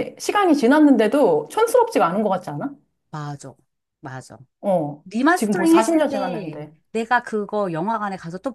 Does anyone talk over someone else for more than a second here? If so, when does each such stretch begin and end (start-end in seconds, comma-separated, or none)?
5.0-6.7